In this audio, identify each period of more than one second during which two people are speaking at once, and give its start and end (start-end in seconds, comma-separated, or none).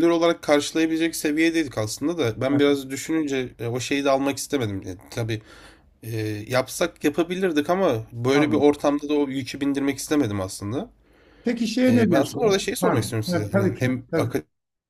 11.9-14.0